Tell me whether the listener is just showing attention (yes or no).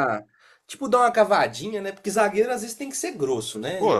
no